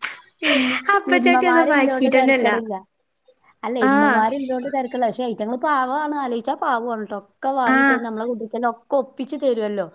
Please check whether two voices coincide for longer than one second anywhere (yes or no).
yes